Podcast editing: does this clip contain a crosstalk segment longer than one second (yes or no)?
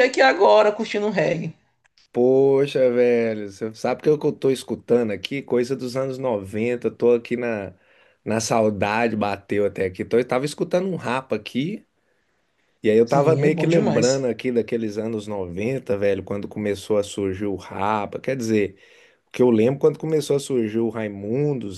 yes